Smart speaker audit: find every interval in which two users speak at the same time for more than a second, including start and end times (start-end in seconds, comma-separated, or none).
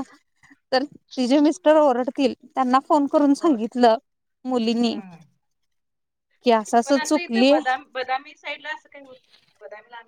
none